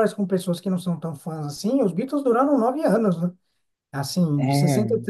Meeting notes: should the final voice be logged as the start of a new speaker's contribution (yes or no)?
no